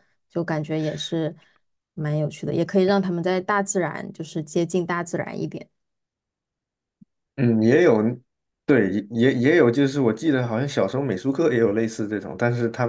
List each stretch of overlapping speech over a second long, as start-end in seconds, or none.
none